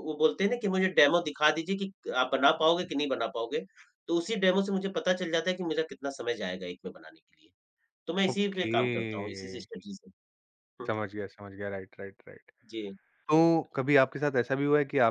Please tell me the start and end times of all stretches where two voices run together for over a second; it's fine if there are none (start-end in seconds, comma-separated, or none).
none